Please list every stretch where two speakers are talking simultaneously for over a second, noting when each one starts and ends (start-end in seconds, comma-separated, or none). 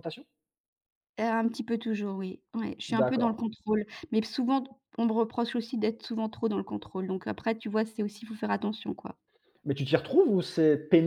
none